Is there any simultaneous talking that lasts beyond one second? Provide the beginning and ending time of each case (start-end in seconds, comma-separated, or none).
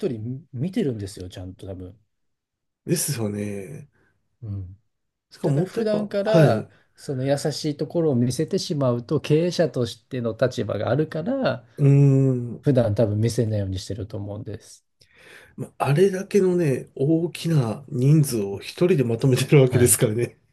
5.4-6.7